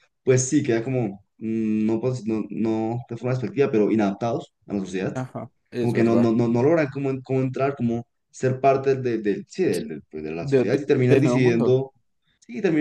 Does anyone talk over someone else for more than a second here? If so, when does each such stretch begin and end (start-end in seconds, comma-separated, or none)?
10.4-11.8